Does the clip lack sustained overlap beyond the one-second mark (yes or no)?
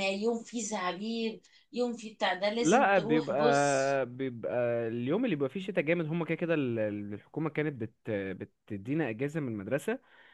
no